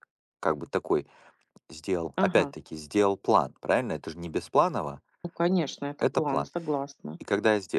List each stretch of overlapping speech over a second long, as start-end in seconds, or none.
none